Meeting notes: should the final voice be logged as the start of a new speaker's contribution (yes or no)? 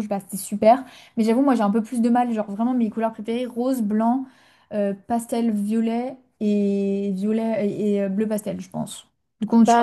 yes